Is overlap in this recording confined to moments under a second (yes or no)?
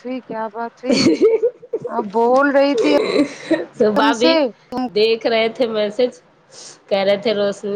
yes